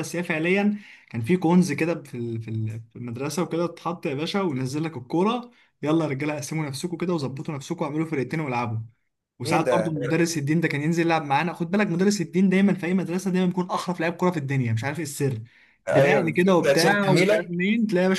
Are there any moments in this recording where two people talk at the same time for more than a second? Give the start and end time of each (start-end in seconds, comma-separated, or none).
15.9-17.5